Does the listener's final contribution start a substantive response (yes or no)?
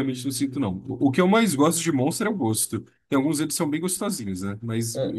yes